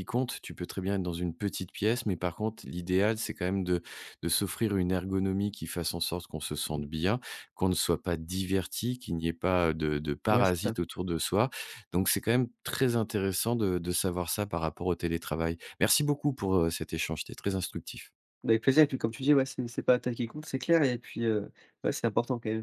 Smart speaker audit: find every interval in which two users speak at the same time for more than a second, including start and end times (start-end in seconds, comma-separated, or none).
none